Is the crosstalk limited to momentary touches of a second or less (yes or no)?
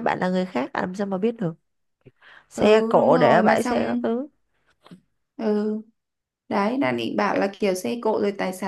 no